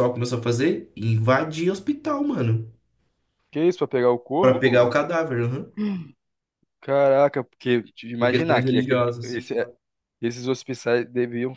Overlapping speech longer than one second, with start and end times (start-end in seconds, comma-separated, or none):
8.2-9.4